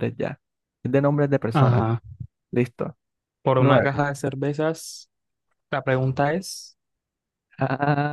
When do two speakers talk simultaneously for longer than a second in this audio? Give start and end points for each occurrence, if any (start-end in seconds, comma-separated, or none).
none